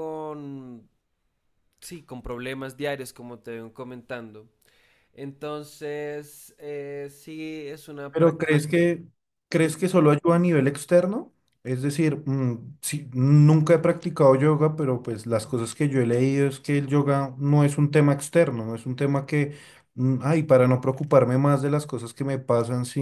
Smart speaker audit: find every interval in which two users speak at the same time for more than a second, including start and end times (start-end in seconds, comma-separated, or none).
none